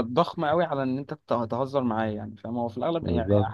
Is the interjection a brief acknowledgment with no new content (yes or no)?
yes